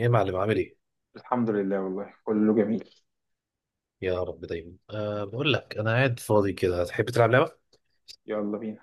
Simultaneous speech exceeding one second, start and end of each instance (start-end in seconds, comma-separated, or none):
none